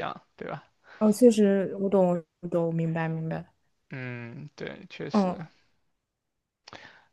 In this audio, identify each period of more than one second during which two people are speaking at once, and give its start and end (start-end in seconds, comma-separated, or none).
none